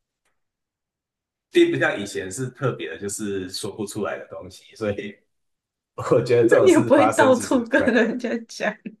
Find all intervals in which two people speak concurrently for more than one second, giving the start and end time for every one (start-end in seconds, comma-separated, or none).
6.4-8.0